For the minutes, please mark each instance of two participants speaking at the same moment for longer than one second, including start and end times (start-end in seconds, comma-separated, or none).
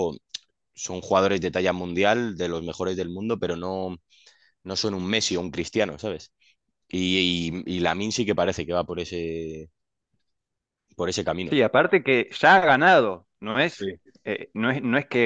none